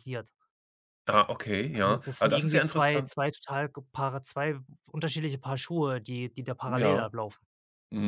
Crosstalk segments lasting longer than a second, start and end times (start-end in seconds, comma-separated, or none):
1.7-3.1